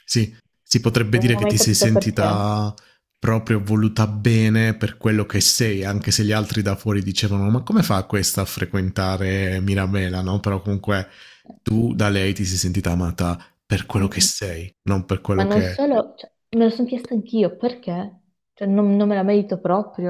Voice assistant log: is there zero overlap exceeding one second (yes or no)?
no